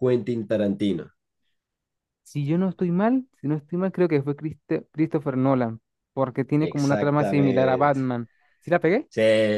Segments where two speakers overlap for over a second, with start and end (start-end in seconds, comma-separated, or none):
6.6-8.0